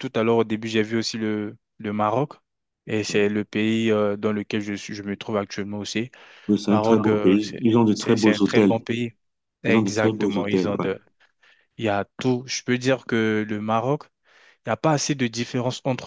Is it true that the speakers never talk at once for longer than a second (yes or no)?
no